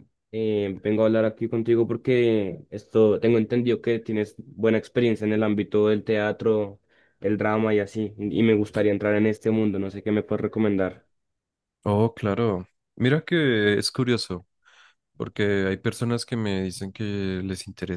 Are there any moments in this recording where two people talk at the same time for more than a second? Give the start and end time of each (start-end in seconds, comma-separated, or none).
none